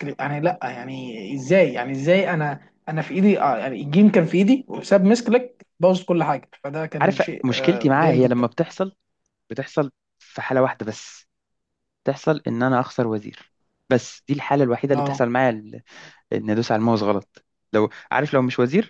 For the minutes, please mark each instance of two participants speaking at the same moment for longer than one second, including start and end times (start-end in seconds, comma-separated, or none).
7.0-8.4